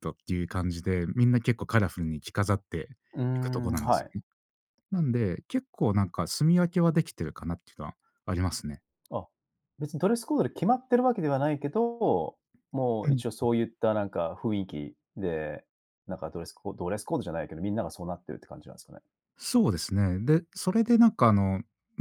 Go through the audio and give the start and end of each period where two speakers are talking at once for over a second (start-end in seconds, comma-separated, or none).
none